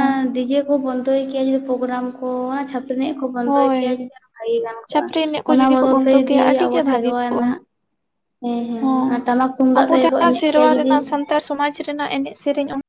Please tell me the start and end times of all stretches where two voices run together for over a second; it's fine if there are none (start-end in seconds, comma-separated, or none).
4.9-7.4